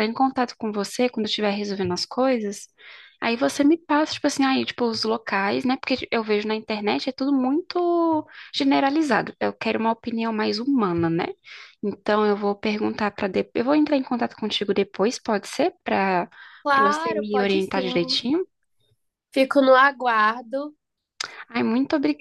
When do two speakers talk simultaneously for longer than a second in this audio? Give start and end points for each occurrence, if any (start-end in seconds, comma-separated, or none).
16.7-18.2